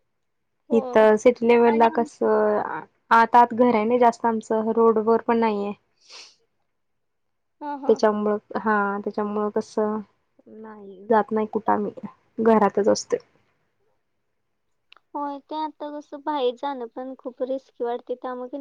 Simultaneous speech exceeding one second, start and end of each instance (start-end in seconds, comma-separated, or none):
none